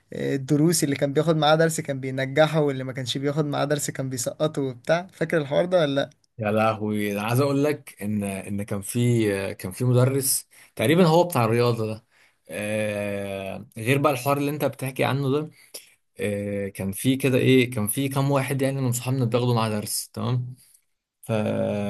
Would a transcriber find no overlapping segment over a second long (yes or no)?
yes